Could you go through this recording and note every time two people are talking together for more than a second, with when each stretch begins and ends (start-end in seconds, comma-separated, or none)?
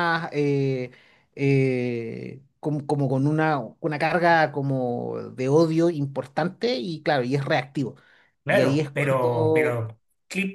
8.5-9.8